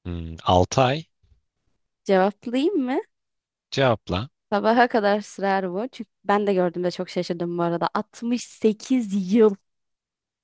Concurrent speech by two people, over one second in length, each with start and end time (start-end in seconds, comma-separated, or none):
none